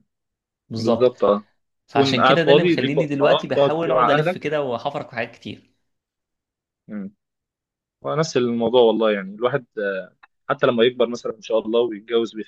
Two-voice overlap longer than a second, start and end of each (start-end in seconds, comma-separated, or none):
1.9-4.6